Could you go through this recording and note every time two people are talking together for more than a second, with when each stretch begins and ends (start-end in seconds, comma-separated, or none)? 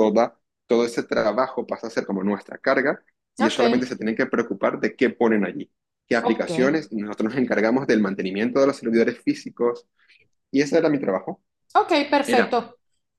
none